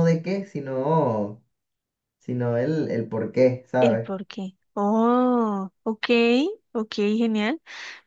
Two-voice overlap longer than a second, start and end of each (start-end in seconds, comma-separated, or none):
none